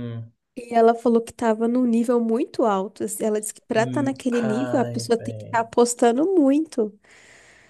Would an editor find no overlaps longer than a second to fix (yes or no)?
no